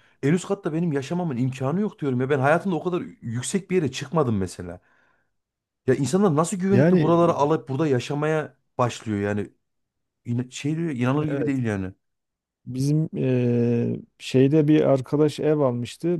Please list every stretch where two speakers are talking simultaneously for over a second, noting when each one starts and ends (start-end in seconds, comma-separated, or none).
none